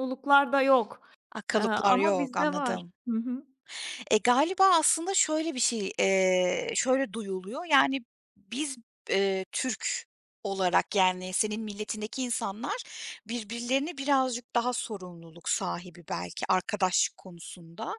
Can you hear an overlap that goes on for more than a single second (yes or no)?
yes